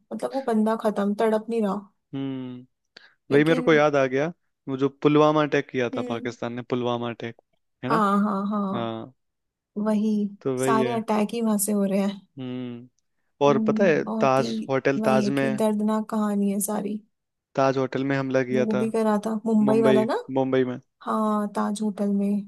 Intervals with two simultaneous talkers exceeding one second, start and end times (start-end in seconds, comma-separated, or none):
13.5-15.6